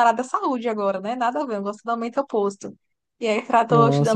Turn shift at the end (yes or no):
yes